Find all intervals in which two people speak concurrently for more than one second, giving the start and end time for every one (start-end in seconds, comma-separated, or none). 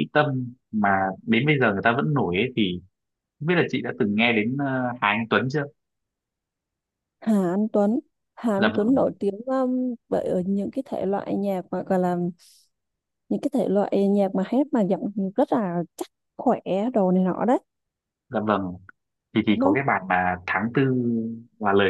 none